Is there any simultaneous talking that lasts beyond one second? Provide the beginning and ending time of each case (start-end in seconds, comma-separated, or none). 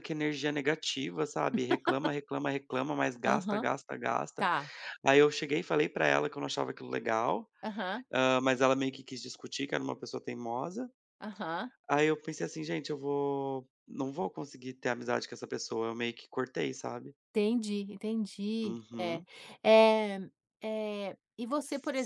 none